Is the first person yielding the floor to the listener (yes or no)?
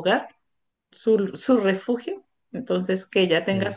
no